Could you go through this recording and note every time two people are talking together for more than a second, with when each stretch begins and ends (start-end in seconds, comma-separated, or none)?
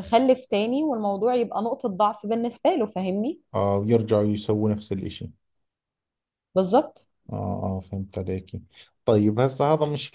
none